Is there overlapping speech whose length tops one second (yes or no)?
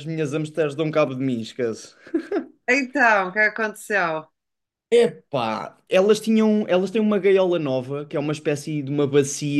no